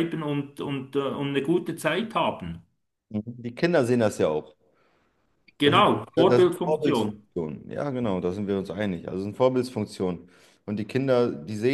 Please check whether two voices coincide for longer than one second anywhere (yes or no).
yes